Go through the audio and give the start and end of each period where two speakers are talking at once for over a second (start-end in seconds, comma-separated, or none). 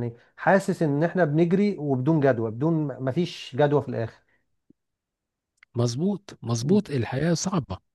none